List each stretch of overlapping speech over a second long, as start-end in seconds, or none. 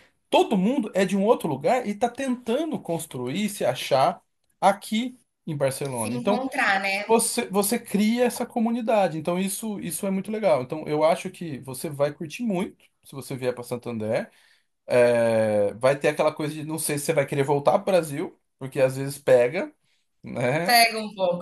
none